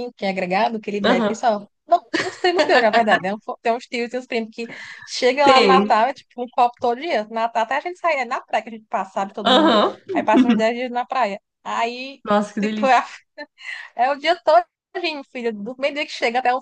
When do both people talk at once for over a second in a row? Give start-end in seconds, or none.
none